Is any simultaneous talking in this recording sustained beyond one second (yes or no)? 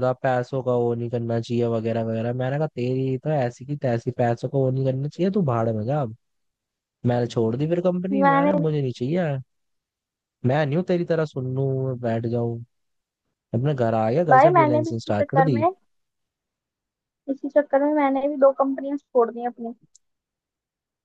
yes